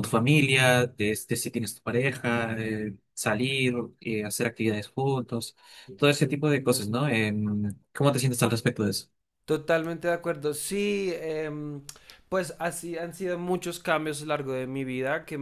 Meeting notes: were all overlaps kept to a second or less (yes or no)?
yes